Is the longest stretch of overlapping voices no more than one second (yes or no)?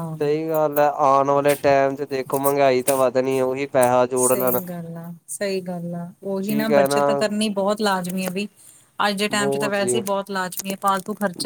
yes